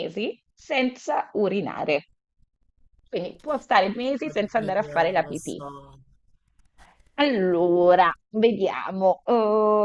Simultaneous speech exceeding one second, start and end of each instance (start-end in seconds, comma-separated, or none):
4.3-5.6